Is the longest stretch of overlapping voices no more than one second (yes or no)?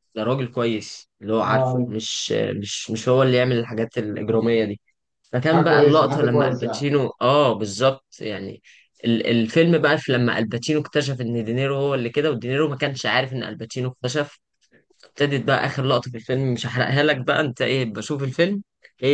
no